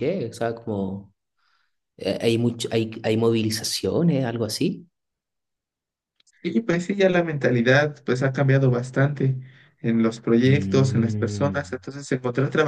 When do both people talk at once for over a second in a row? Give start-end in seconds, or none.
10.5-11.8